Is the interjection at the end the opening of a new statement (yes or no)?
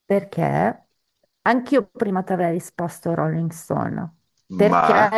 no